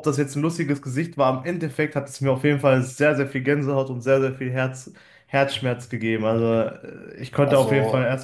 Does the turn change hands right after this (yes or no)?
no